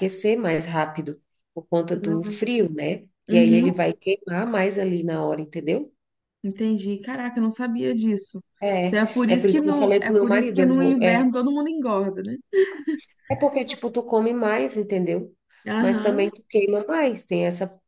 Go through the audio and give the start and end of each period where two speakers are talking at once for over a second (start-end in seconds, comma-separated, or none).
9.3-11.3